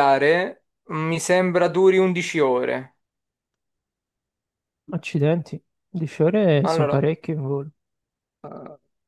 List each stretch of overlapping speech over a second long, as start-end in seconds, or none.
none